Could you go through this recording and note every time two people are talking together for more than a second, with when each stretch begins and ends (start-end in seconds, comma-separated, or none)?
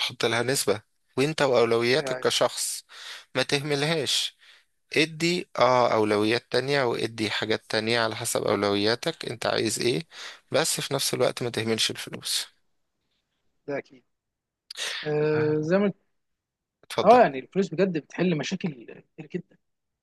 none